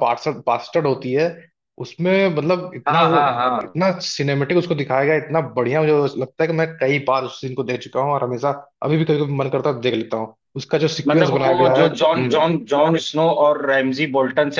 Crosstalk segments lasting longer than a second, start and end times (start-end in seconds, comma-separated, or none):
11.1-12.4